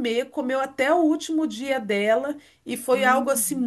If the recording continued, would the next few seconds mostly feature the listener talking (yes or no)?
no